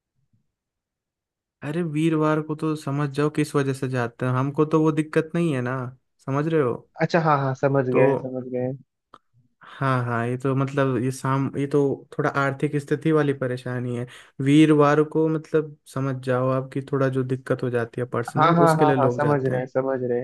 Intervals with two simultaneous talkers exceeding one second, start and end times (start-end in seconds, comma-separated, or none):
18.4-19.7